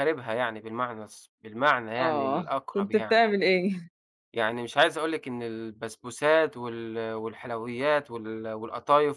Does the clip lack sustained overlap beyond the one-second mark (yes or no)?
no